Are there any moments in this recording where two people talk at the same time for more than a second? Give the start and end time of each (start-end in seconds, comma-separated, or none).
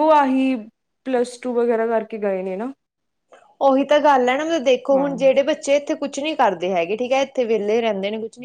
none